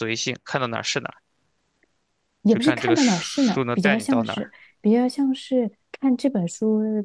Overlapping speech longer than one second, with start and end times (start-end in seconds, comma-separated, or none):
2.5-4.5